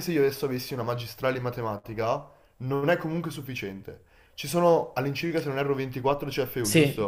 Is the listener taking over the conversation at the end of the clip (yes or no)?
yes